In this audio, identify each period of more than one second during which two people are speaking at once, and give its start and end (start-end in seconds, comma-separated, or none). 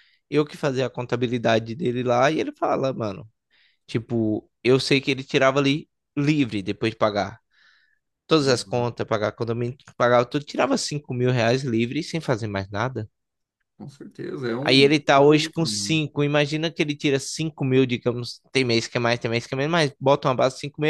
14.7-16.0